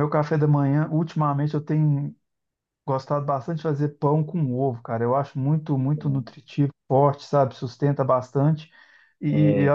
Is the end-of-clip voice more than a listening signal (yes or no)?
no